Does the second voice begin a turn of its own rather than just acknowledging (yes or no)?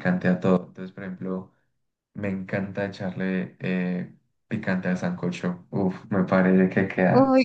yes